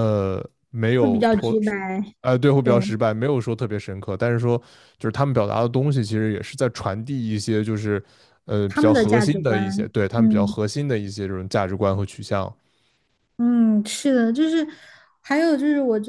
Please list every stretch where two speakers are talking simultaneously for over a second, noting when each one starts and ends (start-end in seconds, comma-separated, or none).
8.7-10.5